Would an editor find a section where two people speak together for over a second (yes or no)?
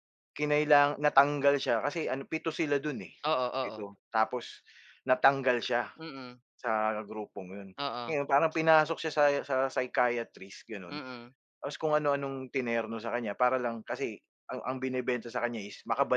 no